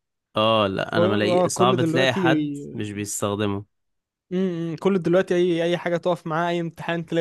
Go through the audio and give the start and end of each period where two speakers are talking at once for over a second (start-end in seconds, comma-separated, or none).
1.0-2.2